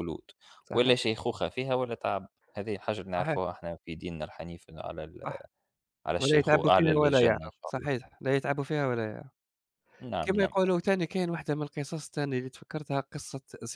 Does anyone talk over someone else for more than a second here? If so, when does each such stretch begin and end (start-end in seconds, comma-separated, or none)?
6.2-7.9